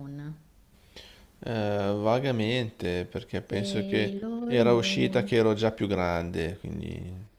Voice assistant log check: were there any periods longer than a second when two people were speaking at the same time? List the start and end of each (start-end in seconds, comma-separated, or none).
3.5-5.2